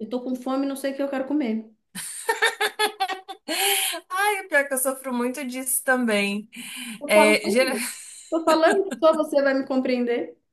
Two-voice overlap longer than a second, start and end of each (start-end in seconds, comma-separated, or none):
none